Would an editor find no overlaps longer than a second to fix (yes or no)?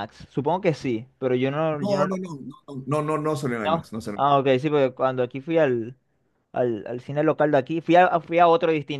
yes